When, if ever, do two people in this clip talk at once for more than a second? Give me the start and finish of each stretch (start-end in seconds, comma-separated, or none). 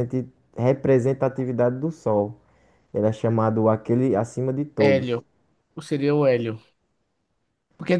none